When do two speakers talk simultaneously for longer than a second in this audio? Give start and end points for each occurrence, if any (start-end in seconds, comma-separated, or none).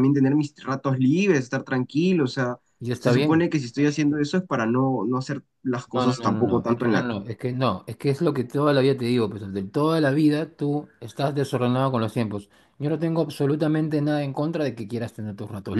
5.9-7.2